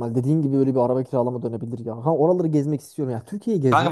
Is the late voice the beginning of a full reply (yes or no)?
yes